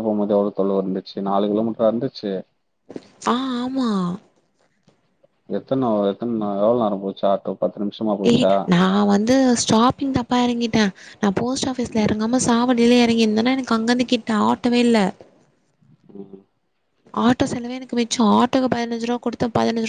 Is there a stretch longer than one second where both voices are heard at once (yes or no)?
no